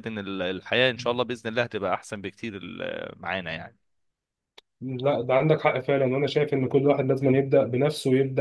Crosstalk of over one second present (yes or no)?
no